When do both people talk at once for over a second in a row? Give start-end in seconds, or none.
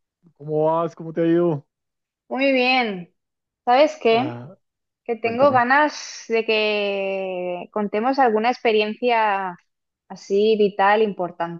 none